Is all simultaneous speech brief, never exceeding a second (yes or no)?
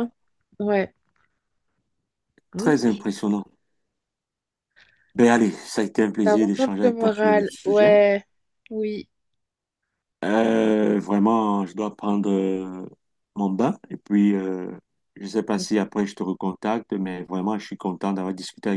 no